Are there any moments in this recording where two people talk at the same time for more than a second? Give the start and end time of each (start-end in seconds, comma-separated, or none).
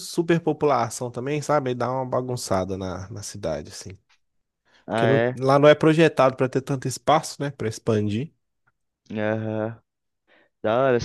none